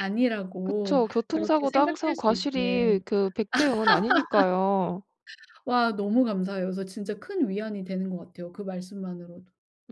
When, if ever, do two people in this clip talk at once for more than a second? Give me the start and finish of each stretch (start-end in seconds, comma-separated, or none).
0.7-3.0